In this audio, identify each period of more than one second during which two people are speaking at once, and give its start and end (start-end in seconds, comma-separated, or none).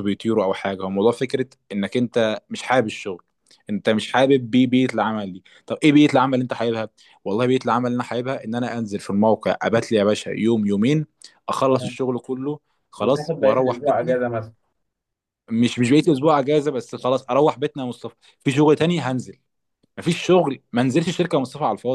13.0-14.2